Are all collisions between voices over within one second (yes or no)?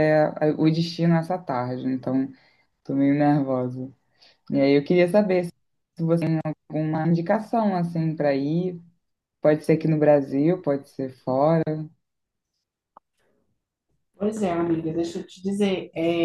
yes